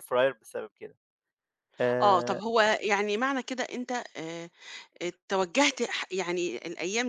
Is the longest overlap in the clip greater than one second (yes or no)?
no